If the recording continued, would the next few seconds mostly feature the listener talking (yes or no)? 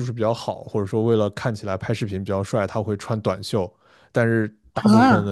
no